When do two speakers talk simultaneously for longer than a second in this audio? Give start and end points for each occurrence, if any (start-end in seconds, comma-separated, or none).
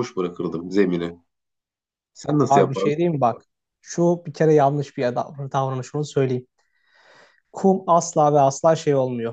none